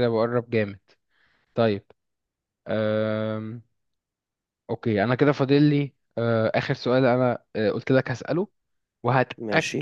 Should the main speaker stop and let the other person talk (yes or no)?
no